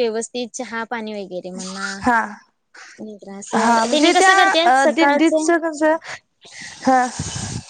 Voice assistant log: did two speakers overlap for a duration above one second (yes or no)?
yes